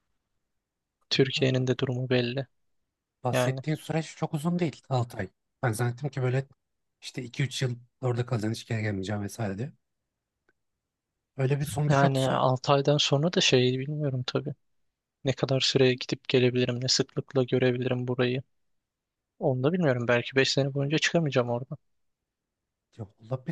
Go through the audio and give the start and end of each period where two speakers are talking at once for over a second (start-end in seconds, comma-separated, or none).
none